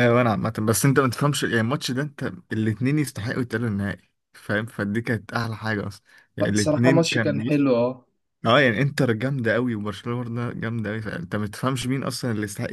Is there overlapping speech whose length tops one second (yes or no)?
yes